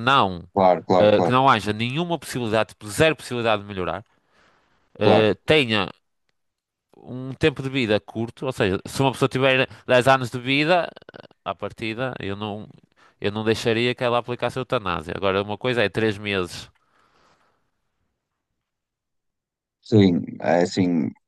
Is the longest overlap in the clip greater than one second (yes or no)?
no